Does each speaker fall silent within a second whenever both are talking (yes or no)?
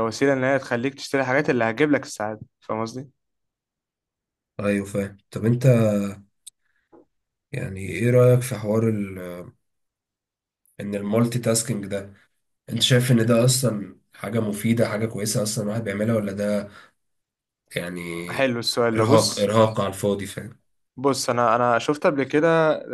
yes